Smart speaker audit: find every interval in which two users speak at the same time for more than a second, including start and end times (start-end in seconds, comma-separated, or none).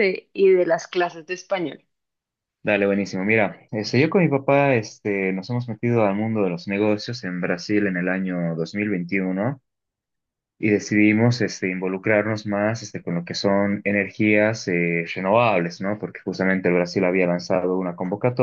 none